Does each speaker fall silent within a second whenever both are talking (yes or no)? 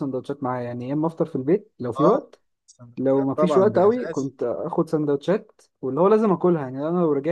no